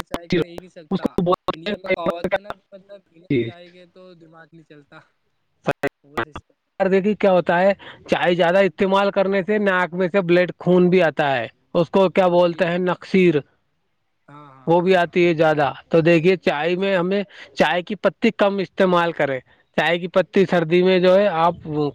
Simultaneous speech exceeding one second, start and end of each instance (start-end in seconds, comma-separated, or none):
1.0-2.4